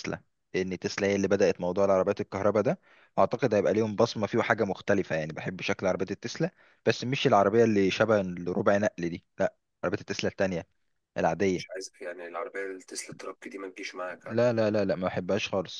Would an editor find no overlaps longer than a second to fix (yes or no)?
yes